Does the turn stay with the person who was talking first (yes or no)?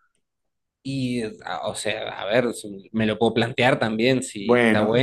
yes